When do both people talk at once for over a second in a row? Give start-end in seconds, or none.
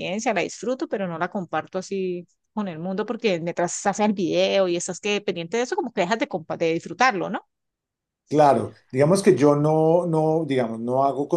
none